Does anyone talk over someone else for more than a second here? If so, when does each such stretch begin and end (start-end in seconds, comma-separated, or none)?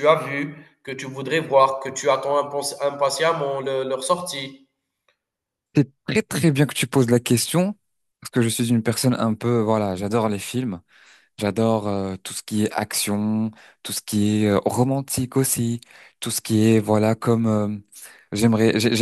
none